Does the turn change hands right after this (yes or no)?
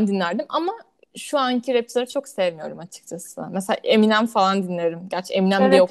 yes